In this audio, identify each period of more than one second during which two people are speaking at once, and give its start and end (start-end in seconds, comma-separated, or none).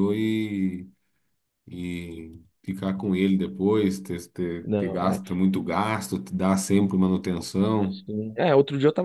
none